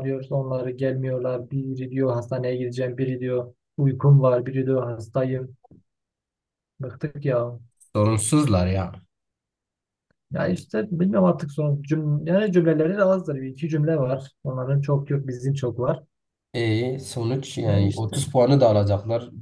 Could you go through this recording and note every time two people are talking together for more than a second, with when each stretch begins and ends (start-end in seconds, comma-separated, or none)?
none